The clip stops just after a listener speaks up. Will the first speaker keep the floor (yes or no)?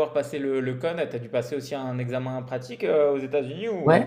no